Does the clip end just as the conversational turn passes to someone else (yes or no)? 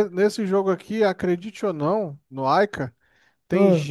no